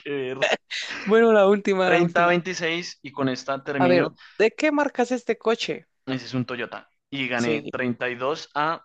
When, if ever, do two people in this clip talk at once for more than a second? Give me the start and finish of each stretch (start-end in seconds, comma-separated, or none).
none